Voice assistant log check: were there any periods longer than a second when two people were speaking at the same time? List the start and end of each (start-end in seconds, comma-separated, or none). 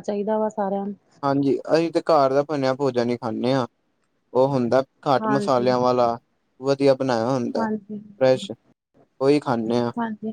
none